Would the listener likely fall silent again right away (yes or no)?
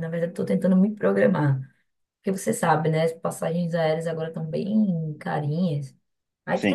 yes